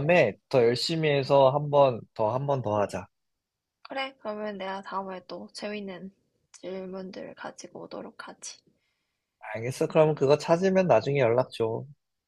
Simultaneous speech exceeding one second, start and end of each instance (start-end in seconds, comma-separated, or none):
none